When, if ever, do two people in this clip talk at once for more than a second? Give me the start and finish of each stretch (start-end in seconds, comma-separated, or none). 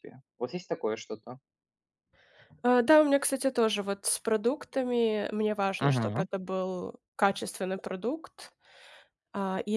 none